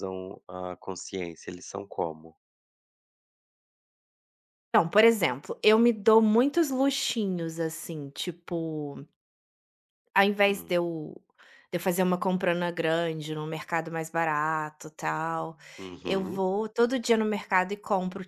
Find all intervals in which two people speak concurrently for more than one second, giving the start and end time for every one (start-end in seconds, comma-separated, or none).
none